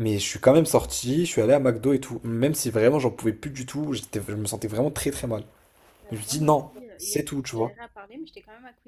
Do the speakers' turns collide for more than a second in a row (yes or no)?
yes